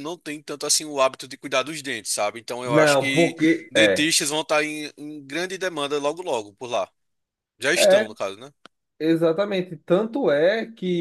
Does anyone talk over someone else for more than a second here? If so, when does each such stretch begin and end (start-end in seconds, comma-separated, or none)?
2.6-4.1